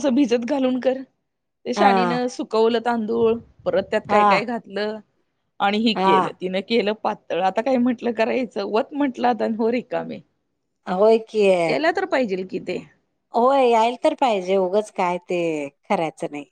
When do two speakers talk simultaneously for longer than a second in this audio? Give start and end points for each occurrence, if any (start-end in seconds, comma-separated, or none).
none